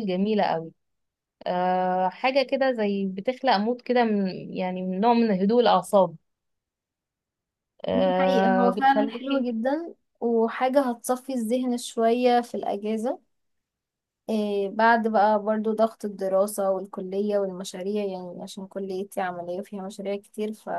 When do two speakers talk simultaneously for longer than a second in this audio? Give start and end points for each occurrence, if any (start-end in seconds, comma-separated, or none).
8.0-9.5